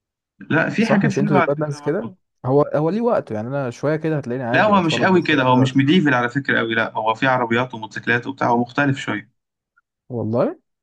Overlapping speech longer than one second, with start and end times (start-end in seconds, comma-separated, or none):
0.8-2.2, 4.5-5.8